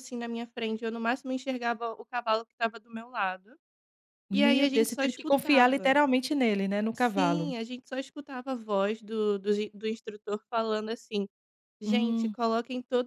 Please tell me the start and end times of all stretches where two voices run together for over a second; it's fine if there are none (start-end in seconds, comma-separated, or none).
4.3-6.0